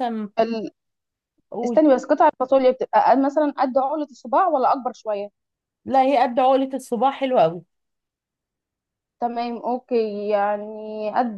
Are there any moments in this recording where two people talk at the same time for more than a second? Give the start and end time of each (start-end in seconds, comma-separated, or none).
none